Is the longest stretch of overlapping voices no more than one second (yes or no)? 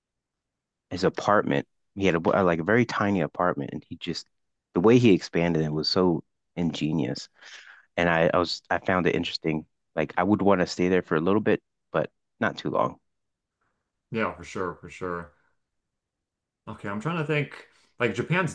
yes